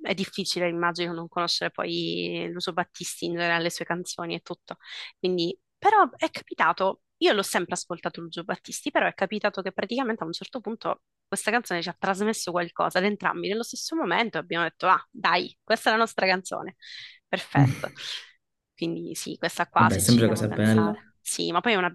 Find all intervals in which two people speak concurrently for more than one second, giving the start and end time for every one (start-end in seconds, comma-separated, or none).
19.8-21.0